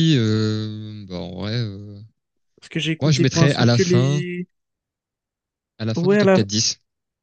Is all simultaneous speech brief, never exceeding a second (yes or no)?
no